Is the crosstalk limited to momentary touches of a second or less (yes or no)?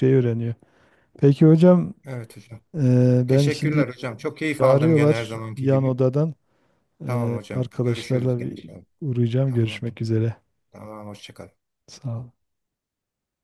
no